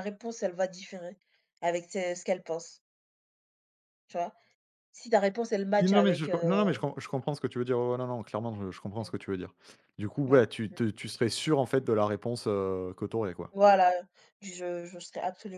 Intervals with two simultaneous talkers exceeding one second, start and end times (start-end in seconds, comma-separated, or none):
none